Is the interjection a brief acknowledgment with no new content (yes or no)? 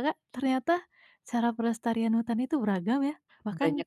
no